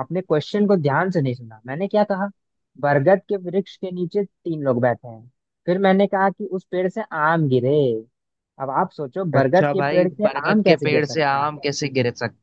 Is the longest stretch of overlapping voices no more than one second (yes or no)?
no